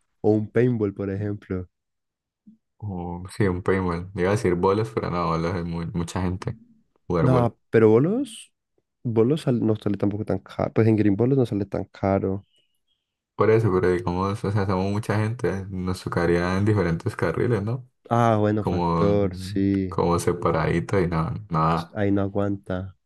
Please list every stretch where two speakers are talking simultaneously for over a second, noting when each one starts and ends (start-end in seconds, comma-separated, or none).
18.6-20.0